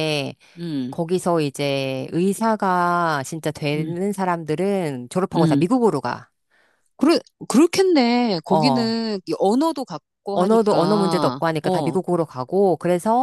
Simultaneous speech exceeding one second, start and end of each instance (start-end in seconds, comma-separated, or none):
10.3-11.9